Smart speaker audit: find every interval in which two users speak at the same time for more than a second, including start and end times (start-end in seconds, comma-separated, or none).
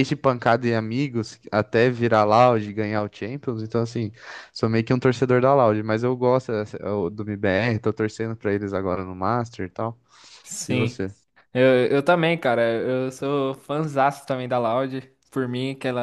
none